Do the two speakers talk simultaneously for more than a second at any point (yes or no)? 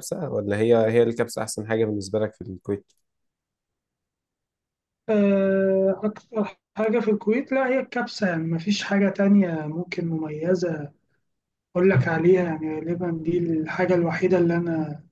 no